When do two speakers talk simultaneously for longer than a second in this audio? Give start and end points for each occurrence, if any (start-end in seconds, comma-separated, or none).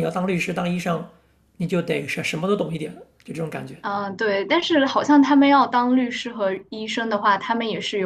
none